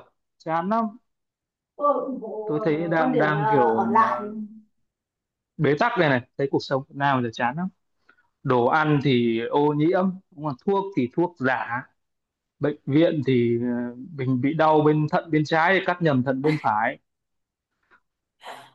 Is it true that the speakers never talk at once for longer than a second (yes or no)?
no